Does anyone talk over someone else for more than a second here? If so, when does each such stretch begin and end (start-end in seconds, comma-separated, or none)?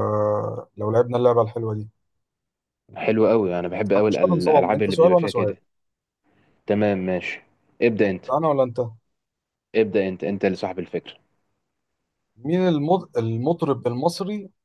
4.1-5.6